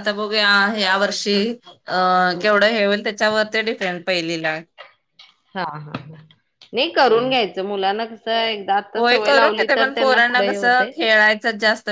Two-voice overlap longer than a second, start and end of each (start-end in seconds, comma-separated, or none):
9.0-10.9